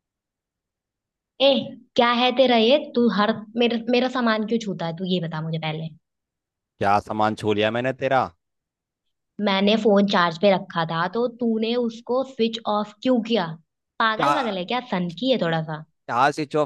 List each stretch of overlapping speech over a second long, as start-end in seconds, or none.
none